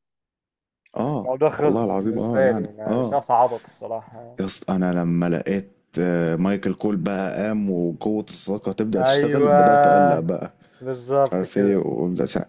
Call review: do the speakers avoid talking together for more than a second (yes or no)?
no